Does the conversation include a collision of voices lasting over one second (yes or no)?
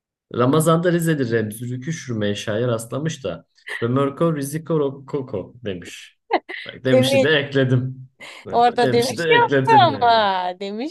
yes